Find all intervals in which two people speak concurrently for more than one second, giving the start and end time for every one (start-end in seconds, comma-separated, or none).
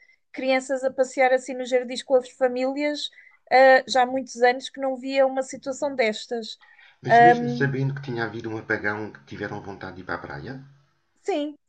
none